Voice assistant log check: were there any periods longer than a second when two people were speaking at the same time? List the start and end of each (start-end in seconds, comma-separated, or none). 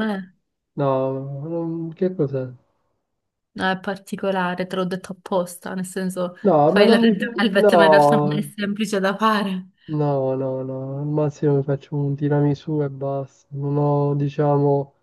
6.4-8.5